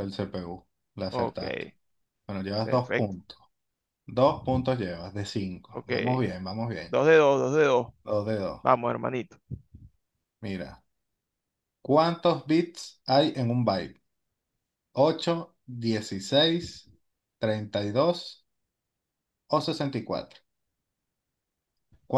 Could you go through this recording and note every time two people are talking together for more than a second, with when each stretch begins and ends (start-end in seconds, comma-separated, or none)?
none